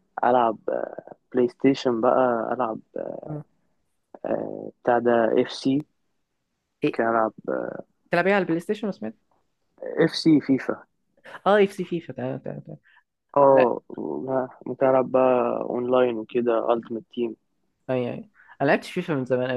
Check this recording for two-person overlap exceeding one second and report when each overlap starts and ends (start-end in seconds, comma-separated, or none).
none